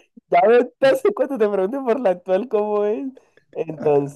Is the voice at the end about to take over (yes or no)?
no